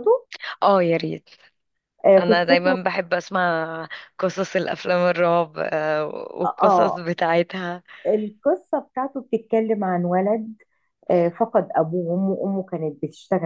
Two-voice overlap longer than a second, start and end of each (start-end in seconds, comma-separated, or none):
none